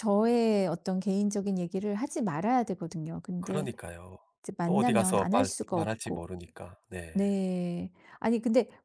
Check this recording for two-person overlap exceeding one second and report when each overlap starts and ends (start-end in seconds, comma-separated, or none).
4.6-6.3